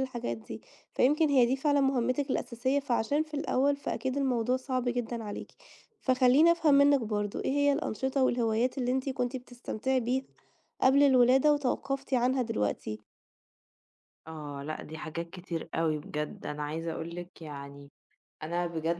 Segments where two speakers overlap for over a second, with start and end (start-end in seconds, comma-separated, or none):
none